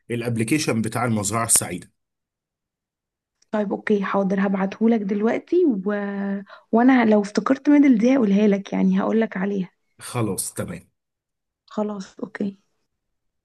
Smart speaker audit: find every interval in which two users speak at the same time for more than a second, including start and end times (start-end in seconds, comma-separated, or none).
none